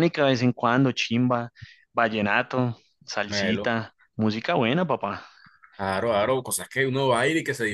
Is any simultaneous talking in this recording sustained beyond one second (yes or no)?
no